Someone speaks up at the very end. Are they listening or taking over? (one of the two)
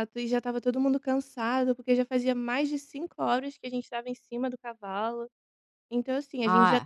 taking over